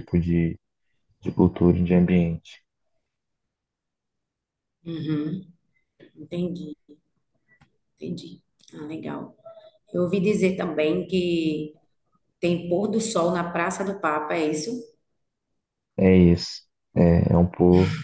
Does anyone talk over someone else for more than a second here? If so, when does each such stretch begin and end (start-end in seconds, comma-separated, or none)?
none